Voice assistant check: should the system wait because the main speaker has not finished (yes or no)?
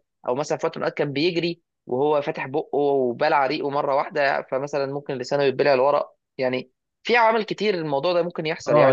no